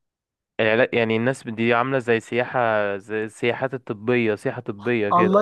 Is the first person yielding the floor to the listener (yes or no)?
yes